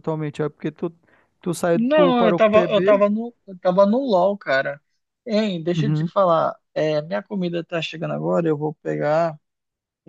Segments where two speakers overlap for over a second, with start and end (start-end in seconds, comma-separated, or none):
1.7-3.0